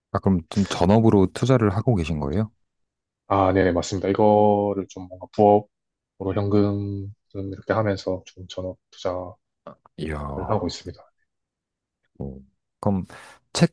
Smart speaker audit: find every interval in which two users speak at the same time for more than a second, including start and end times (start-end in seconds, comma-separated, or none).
none